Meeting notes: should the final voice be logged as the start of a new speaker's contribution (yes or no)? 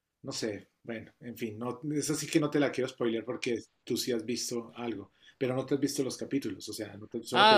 yes